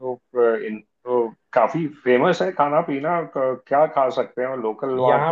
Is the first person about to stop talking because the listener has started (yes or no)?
yes